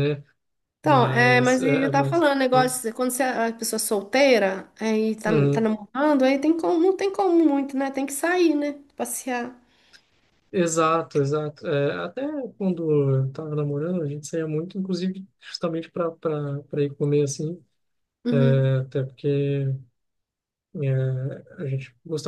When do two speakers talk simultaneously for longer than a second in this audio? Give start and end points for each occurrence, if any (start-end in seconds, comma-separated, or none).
0.8-2.7